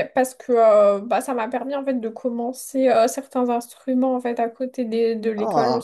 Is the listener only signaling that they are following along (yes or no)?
no